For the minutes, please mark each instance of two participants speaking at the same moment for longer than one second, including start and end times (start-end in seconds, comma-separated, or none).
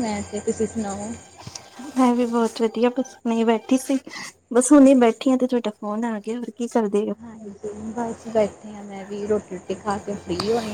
none